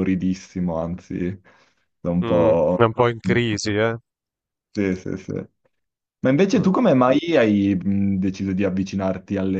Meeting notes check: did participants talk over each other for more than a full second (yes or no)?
no